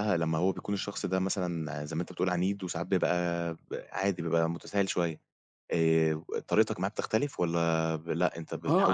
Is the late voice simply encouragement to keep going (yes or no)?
no